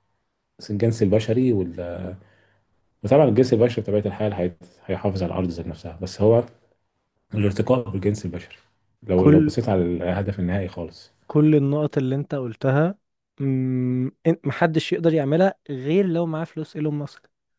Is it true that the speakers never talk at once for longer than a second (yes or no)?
yes